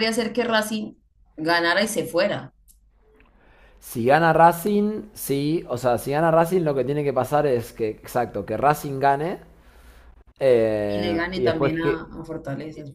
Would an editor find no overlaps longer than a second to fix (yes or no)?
no